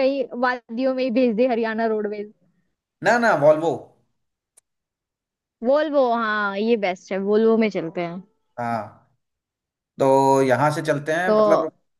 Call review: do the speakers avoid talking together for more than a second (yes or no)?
yes